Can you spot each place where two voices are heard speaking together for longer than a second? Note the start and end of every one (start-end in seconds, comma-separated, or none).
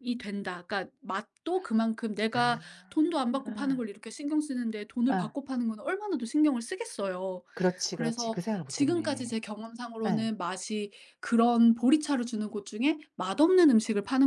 7.9-9.4